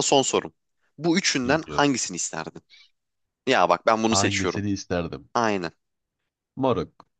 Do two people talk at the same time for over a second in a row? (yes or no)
no